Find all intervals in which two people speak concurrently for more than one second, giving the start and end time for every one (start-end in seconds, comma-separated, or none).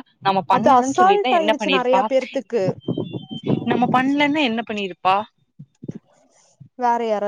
0.6-2.0